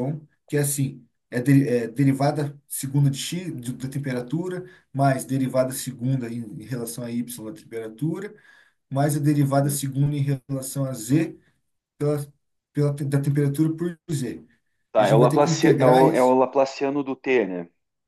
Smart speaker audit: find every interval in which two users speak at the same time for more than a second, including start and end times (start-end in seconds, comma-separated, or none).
15.0-16.4